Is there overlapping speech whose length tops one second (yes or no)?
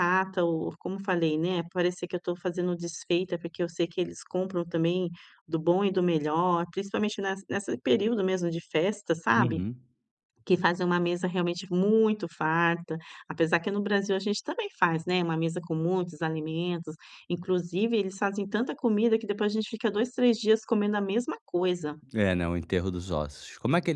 no